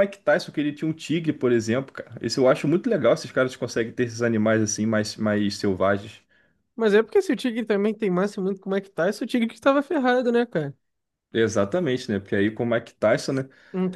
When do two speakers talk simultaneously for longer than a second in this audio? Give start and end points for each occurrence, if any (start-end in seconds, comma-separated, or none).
none